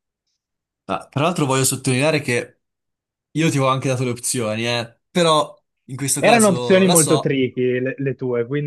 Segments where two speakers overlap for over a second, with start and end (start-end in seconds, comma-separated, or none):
6.2-7.4